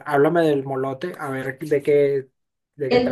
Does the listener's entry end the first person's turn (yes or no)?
yes